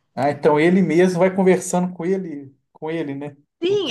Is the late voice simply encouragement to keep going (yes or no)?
no